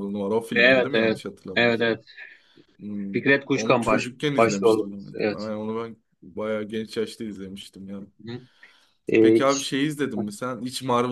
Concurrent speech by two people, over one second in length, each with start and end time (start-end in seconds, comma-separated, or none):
0.5-2.0, 3.1-5.5